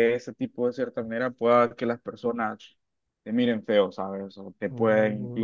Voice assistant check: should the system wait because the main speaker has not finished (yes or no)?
yes